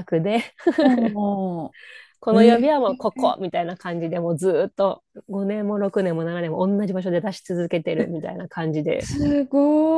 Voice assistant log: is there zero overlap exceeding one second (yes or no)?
yes